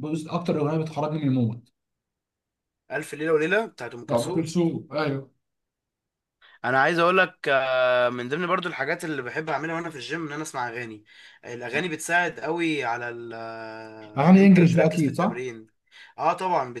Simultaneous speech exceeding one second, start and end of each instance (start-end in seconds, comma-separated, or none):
14.2-15.4